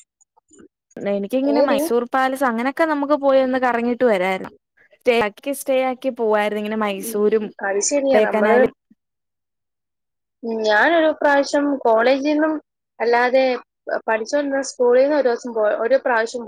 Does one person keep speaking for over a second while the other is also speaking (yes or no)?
yes